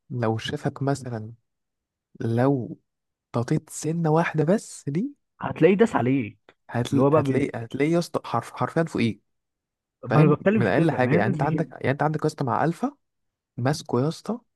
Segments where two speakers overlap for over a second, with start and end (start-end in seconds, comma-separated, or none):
10.0-11.7